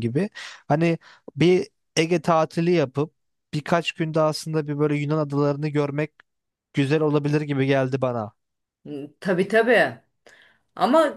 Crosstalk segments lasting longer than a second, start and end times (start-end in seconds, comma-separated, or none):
none